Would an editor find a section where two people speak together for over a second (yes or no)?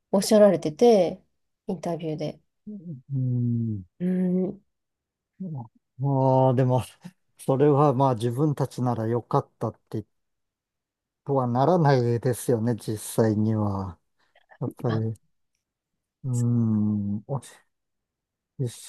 no